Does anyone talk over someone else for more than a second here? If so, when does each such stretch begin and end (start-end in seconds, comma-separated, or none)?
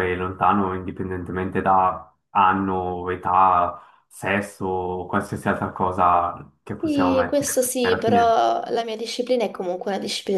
6.8-8.3